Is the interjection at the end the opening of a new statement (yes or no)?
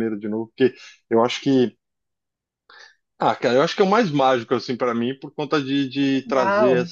no